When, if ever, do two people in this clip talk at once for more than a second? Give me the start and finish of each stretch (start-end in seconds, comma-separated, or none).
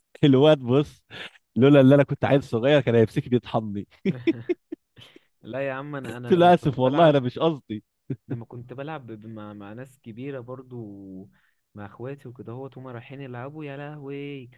6.1-7.3